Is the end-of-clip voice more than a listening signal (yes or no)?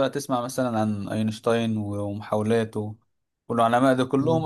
no